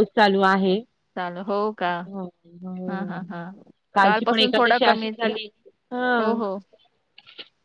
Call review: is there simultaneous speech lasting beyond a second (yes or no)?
yes